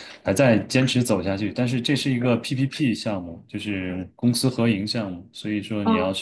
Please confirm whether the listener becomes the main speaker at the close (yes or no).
no